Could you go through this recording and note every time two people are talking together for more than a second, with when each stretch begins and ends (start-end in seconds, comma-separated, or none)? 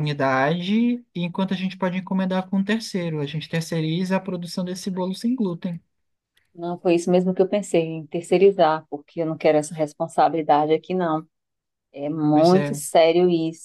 none